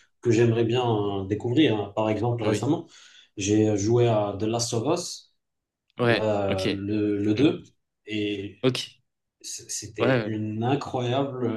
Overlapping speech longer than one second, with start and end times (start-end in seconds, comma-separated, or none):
none